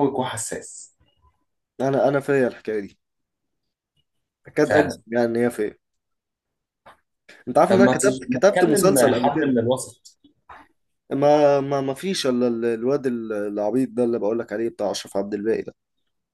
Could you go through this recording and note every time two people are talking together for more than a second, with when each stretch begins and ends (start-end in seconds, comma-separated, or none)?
7.7-9.5